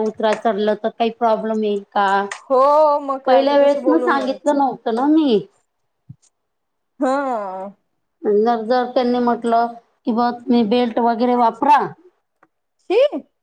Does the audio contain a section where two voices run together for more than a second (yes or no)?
yes